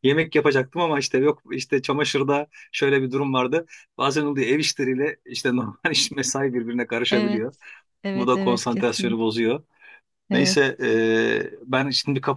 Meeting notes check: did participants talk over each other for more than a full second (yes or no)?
yes